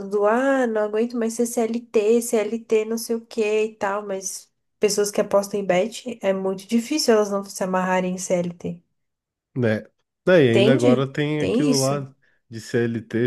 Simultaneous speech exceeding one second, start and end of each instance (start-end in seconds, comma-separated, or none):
10.5-12.1